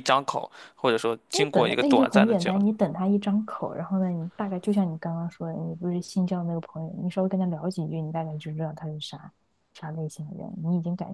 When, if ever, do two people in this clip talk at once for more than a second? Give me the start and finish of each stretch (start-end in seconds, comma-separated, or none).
1.3-2.6